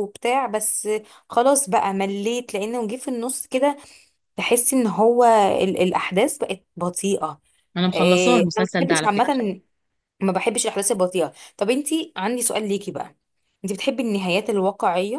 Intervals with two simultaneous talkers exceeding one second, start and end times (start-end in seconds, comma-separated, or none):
7.9-9.4